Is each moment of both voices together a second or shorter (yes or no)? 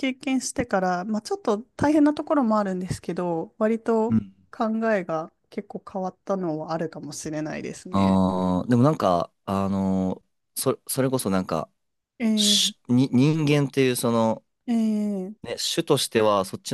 yes